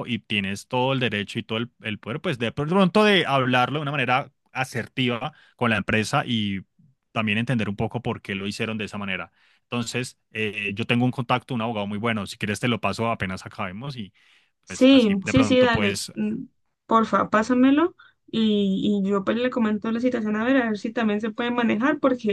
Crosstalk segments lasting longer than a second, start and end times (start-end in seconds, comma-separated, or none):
14.7-16.1